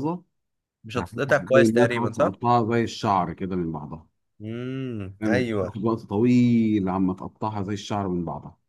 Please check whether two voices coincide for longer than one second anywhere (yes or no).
yes